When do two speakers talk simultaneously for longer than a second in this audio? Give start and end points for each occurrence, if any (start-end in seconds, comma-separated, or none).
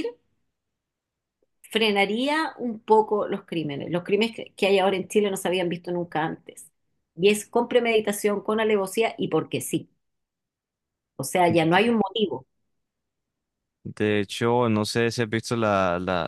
none